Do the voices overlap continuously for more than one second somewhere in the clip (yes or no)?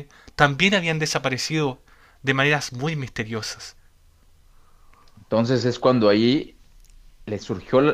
no